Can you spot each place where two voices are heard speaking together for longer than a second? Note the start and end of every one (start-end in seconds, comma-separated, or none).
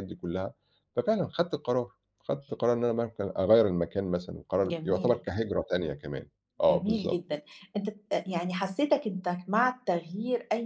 none